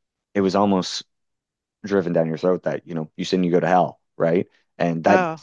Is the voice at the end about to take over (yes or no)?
no